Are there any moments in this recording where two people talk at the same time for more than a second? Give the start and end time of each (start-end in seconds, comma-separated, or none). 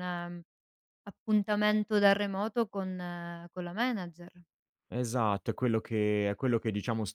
none